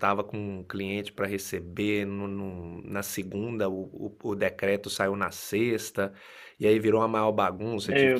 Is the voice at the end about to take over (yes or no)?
no